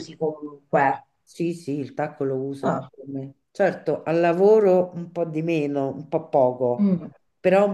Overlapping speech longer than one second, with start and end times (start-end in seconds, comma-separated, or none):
none